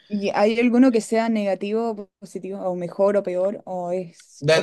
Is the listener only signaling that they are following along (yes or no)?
no